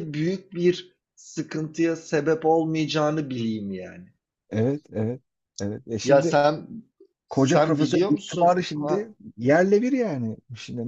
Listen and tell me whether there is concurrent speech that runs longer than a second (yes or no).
yes